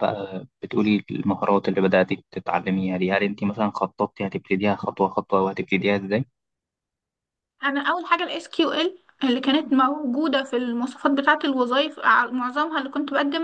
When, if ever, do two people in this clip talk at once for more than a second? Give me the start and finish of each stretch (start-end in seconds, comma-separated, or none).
none